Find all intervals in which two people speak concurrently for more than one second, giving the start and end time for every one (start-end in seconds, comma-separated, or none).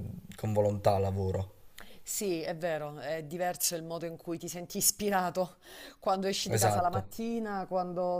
none